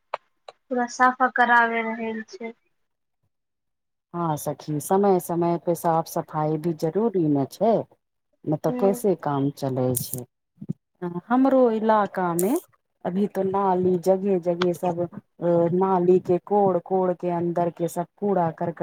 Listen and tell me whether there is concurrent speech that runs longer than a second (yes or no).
no